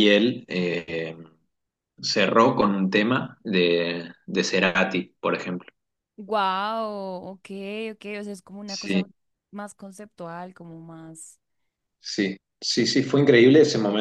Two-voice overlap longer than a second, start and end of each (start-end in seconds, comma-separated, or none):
none